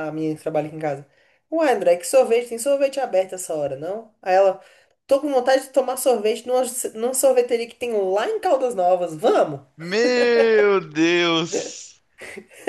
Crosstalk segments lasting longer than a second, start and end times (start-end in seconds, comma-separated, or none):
none